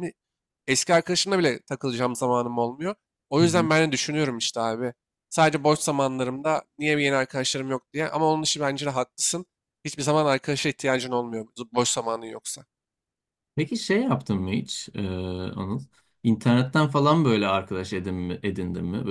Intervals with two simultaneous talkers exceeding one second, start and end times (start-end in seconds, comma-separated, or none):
none